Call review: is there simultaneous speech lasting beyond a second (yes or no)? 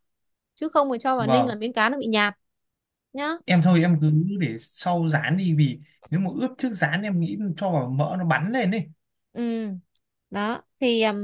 no